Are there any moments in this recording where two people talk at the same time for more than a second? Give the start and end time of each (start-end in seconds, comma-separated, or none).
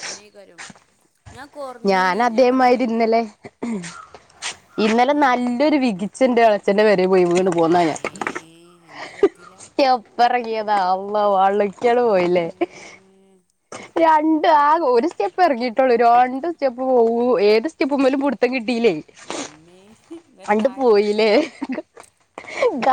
12.0-13.4